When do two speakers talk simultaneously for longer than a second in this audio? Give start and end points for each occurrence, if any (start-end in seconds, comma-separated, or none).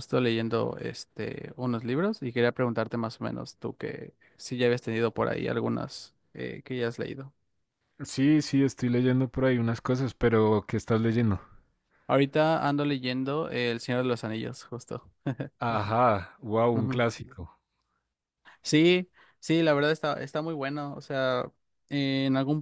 none